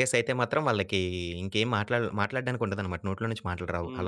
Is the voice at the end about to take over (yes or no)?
yes